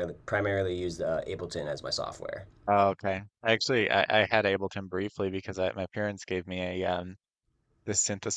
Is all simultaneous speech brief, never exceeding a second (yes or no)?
yes